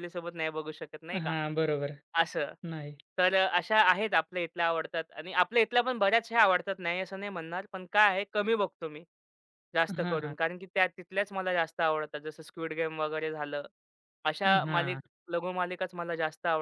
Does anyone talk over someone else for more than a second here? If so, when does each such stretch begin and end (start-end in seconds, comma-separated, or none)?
none